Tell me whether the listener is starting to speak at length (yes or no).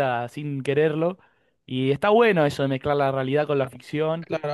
yes